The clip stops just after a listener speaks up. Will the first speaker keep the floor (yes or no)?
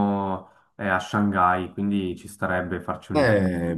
no